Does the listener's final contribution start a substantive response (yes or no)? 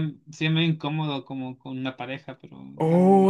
yes